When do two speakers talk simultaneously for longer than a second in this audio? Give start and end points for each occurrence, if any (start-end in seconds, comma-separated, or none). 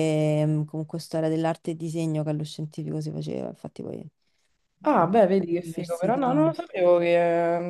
4.9-6.5